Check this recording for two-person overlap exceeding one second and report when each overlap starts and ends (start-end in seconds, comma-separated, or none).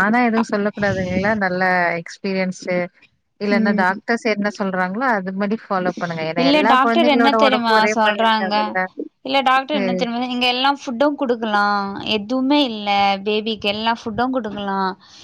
6.4-8.5